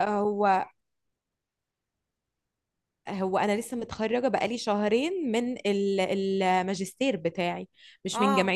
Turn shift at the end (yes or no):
no